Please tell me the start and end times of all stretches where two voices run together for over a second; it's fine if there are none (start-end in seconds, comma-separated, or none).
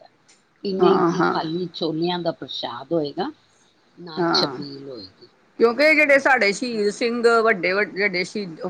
none